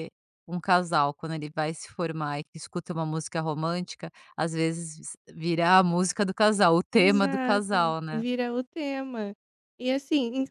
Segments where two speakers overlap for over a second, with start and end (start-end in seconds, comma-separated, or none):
6.9-8.2